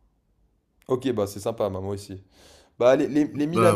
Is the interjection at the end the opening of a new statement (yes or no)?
no